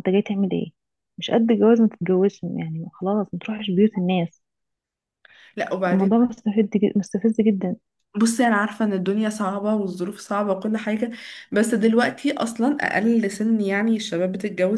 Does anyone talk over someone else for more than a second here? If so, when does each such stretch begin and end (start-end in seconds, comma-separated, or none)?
none